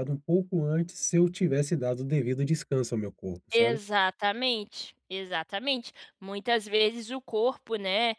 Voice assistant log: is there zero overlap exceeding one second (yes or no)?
yes